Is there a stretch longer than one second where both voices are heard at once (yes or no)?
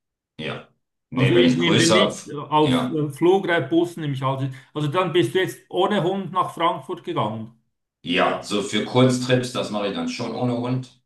yes